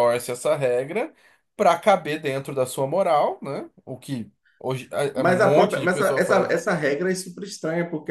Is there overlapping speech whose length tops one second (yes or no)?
yes